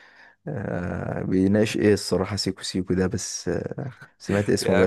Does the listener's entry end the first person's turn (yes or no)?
yes